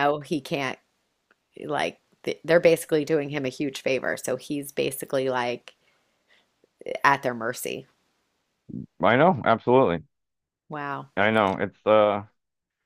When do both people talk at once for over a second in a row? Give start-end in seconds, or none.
none